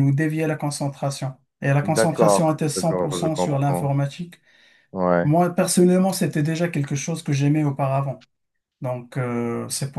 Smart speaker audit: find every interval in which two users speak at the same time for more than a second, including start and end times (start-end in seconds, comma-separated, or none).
1.8-3.9